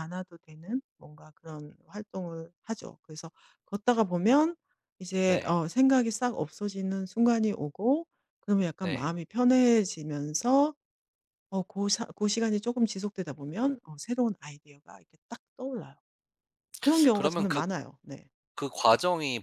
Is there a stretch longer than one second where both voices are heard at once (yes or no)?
no